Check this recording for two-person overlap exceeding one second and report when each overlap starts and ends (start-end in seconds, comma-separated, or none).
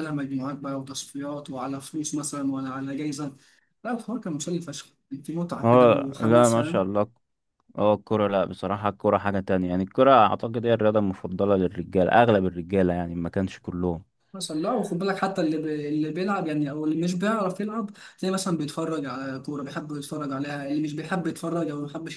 5.6-6.8